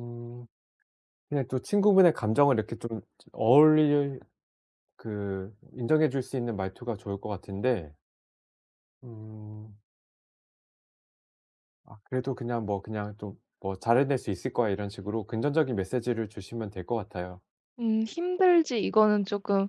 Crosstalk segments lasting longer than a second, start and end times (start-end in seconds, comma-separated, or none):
none